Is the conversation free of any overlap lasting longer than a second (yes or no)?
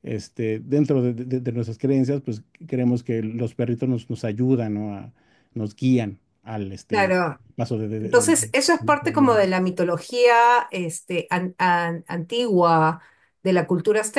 no